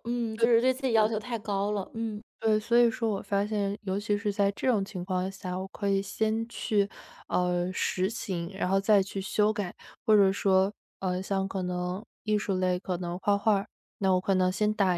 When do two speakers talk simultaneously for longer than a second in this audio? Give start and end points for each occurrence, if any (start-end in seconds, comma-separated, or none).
none